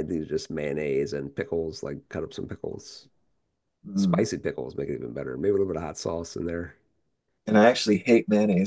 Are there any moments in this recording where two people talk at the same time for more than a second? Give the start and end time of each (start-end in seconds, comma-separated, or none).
none